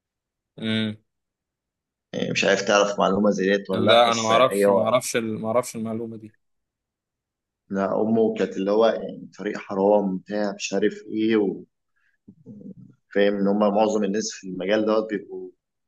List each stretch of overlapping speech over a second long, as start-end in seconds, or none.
3.7-5.0